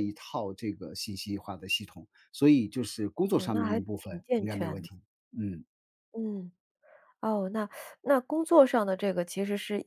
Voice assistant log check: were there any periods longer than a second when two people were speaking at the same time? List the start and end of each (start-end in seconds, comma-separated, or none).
3.3-4.9